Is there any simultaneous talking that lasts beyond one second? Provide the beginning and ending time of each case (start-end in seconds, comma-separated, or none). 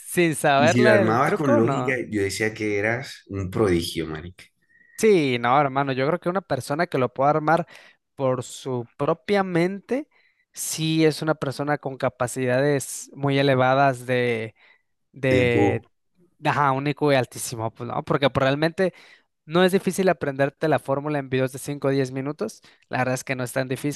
0.6-2.0